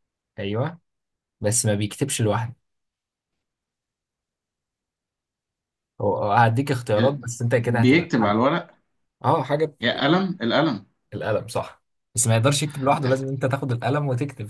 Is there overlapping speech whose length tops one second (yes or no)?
yes